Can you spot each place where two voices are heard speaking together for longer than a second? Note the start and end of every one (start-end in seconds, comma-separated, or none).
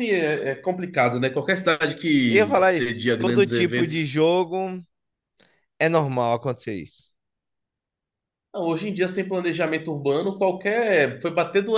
2.3-4.1